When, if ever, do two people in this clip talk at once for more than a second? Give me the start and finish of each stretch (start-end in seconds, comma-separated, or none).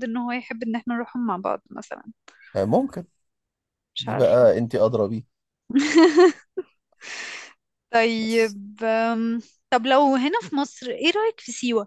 none